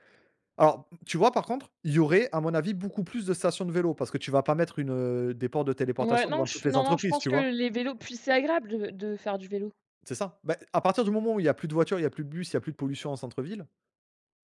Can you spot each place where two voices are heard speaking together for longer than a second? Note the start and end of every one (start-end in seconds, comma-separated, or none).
6.0-7.5